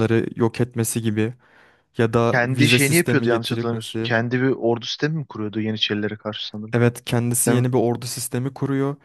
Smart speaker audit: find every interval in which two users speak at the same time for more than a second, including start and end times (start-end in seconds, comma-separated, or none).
2.2-4.1